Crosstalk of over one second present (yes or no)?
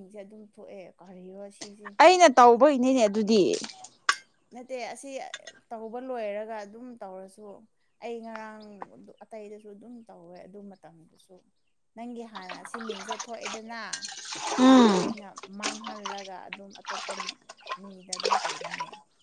no